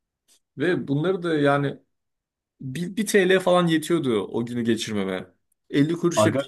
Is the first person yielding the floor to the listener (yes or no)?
no